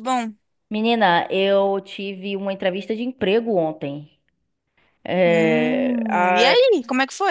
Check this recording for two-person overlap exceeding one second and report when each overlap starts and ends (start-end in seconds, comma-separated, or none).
5.2-6.6